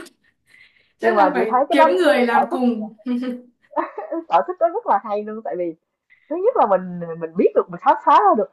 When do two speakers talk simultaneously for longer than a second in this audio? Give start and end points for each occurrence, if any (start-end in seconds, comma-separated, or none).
1.0-2.9